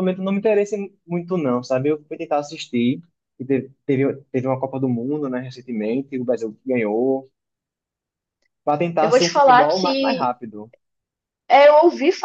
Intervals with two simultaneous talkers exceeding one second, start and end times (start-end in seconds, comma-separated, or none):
9.0-10.3